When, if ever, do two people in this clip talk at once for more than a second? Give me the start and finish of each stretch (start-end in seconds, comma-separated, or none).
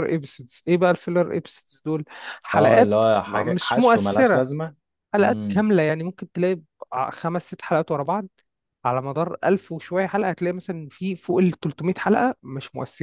2.5-4.4